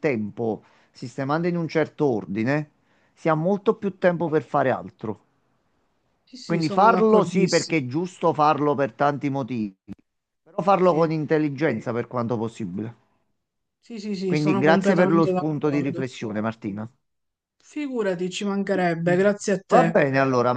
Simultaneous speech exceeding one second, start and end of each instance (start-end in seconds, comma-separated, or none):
6.4-7.8, 14.3-16.0